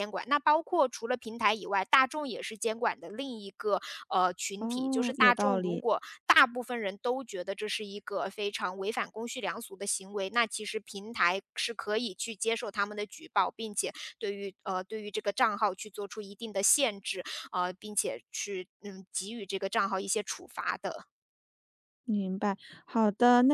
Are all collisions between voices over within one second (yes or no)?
no